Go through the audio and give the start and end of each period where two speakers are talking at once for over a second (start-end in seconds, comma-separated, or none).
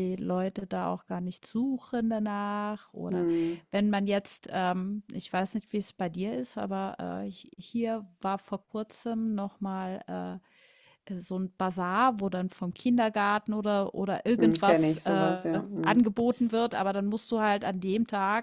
14.4-16.1